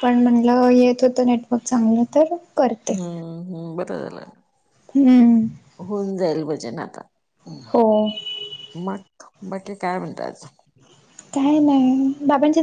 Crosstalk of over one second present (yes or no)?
no